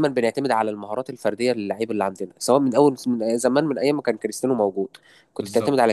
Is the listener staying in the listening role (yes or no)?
yes